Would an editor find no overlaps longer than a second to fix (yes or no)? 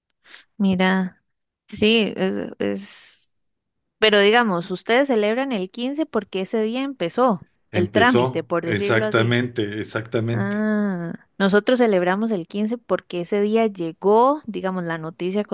no